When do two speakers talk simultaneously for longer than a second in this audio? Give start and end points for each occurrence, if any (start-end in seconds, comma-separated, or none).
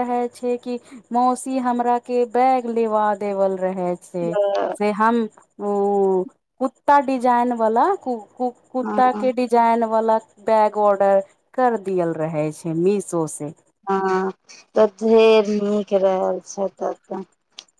none